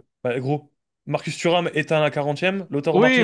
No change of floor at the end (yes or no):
no